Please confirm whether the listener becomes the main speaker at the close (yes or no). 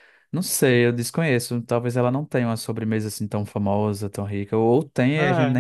yes